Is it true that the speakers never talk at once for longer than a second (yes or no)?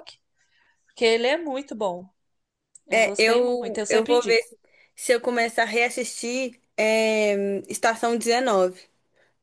no